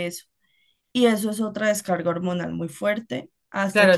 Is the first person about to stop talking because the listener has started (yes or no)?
yes